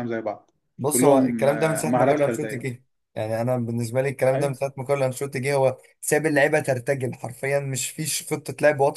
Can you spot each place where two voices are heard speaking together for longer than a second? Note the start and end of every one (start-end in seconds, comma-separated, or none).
0.9-2.7